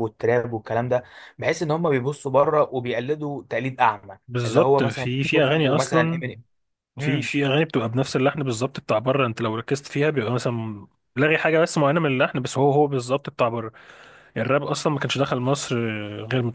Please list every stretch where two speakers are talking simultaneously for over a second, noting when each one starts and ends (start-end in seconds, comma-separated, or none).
4.3-6.2